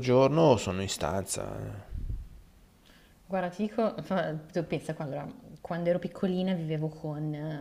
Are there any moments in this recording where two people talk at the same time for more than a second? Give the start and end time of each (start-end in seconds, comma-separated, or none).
none